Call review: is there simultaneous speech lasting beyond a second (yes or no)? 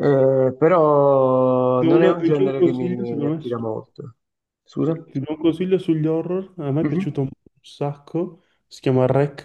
yes